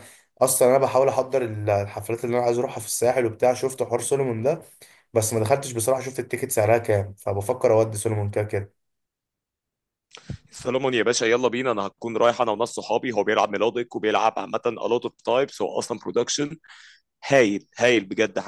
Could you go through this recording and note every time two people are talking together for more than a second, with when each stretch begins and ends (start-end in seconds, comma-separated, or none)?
none